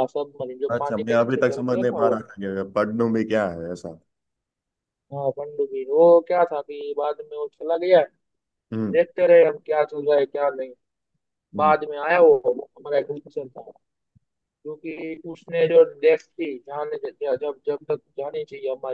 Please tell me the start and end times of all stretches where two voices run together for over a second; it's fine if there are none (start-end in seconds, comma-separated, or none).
0.7-2.2